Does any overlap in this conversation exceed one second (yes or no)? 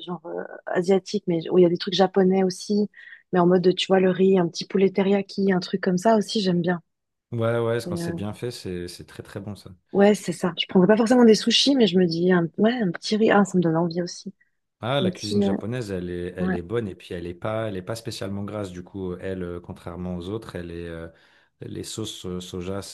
no